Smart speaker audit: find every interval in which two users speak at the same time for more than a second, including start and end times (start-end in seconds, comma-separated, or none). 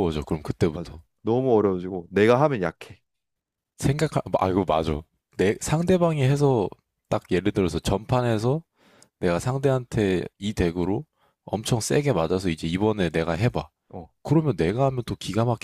none